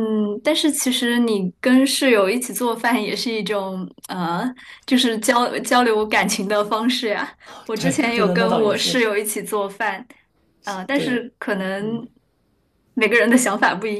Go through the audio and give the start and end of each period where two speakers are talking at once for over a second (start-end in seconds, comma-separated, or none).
7.4-9.1